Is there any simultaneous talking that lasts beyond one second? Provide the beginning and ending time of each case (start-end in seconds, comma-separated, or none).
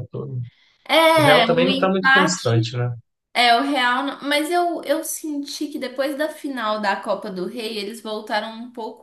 1.2-2.7